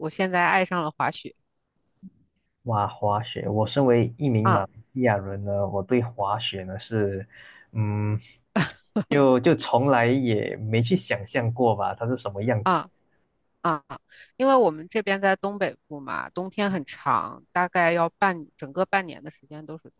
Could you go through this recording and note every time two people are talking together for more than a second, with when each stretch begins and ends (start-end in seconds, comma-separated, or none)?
none